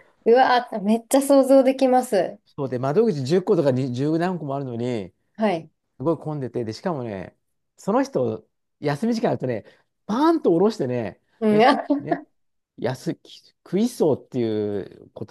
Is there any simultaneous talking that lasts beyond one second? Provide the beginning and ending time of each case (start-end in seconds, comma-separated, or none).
none